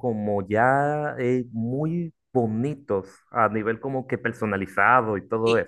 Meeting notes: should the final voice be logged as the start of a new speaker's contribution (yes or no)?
yes